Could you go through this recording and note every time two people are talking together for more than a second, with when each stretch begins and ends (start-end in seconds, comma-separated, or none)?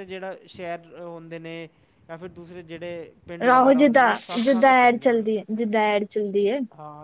3.5-5.3